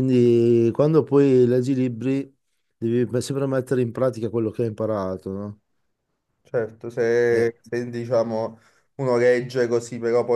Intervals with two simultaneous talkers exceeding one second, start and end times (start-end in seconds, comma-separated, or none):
none